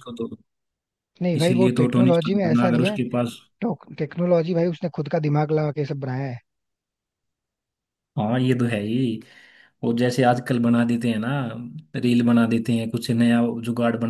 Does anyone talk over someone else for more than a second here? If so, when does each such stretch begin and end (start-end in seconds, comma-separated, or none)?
1.4-3.0